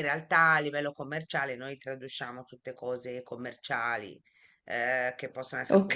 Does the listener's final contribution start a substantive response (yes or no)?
no